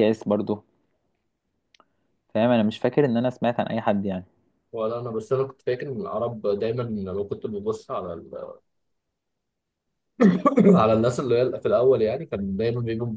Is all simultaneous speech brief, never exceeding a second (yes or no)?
yes